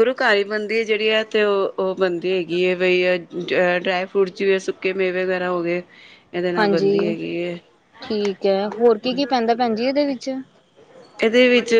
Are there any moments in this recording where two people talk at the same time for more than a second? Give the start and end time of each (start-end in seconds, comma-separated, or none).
none